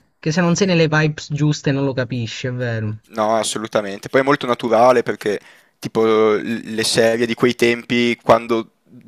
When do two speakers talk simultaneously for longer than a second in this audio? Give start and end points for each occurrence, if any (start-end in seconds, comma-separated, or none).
none